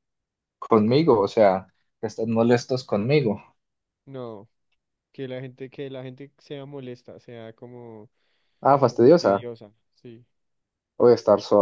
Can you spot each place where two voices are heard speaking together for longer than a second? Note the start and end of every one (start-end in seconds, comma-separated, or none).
none